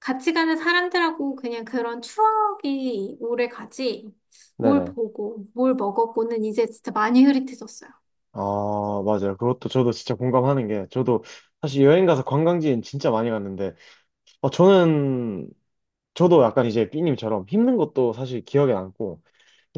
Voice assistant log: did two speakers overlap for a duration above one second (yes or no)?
no